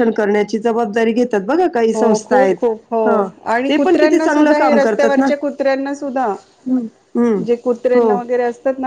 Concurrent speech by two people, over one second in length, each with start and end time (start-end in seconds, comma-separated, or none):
3.7-5.3